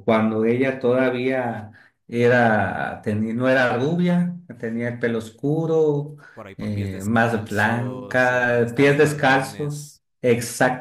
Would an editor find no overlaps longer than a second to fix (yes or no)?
no